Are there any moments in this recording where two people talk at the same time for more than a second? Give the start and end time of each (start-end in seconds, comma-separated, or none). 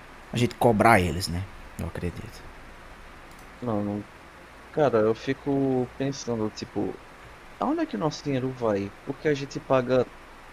none